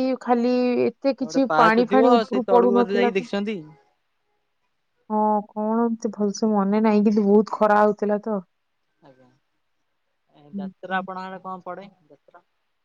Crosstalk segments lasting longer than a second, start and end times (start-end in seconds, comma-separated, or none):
1.2-3.3